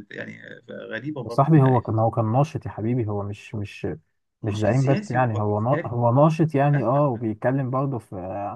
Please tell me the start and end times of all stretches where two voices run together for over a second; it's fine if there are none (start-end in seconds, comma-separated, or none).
4.4-5.9